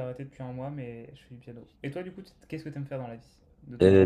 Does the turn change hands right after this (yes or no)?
yes